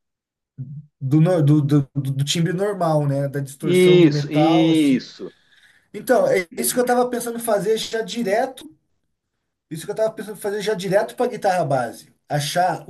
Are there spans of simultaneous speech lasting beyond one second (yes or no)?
yes